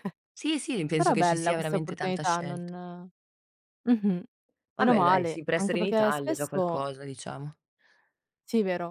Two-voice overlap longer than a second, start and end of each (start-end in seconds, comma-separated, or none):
0.9-2.7, 4.8-6.8